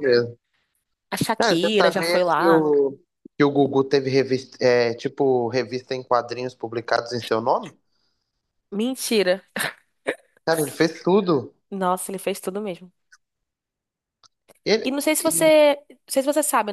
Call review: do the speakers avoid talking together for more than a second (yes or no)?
no